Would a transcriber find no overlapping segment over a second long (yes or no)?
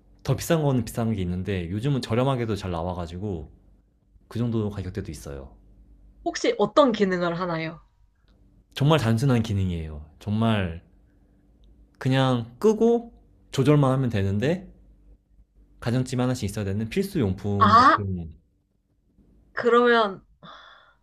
yes